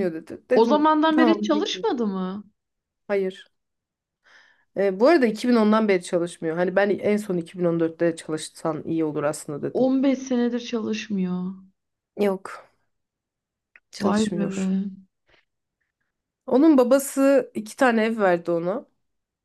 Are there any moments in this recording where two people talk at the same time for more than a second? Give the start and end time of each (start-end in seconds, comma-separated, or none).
0.5-1.9